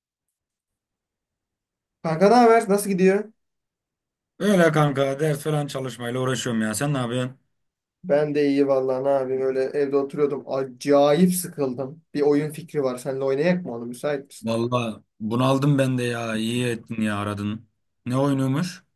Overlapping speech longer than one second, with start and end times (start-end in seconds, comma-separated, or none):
none